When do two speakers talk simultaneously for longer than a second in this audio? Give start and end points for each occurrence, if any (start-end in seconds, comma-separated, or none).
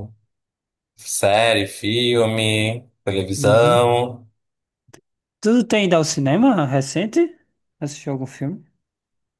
none